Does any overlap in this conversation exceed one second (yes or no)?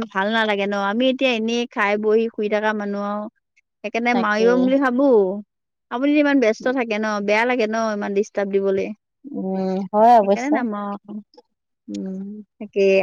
no